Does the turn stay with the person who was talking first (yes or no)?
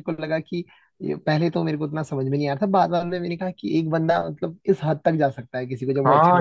no